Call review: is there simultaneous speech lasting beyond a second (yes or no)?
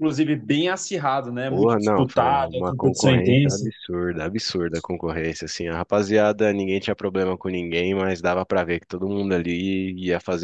yes